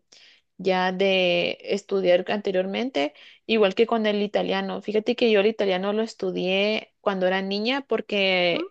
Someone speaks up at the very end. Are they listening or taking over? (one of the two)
listening